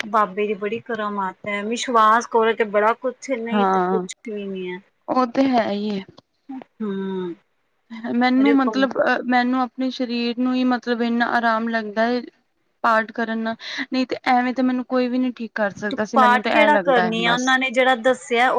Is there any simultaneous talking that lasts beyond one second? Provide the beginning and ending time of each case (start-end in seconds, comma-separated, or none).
15.9-17.4